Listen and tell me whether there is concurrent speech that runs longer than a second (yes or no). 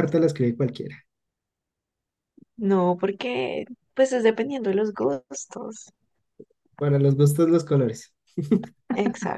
no